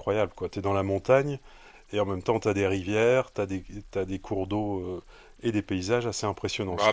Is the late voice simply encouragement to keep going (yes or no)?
no